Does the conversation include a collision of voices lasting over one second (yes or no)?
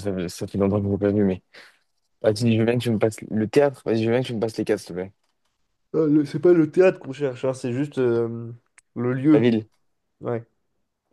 no